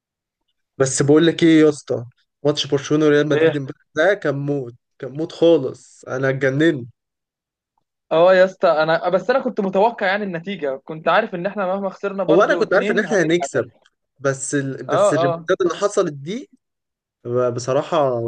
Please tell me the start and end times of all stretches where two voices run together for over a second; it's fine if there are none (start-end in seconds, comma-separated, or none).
12.3-13.7